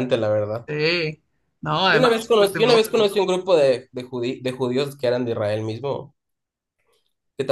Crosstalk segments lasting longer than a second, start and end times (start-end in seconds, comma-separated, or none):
1.9-3.1